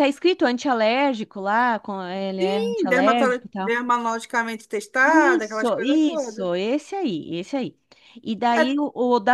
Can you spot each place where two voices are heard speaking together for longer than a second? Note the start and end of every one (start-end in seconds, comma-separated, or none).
2.4-3.7, 5.0-6.5